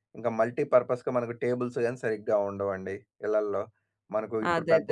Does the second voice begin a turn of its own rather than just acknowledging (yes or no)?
no